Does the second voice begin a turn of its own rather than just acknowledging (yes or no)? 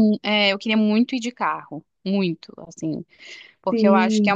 no